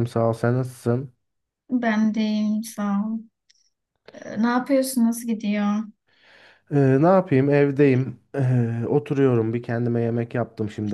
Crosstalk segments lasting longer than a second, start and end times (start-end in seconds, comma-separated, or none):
none